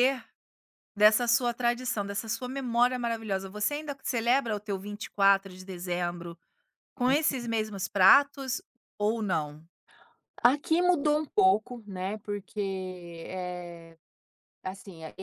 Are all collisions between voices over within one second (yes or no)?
yes